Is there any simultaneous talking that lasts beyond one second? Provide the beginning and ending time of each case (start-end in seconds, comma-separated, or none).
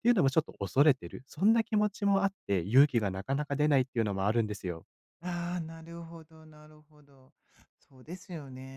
none